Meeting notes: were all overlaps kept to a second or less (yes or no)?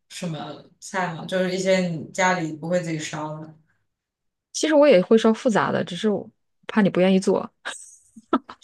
yes